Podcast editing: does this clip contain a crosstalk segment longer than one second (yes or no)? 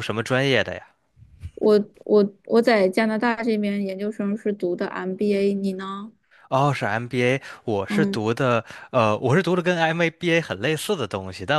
no